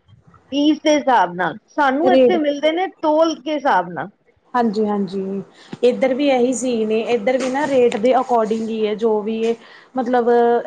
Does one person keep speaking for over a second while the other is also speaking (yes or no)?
no